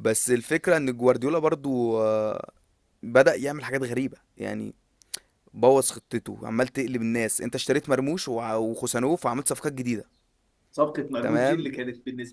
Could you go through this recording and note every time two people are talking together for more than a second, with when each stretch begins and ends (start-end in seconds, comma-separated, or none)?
none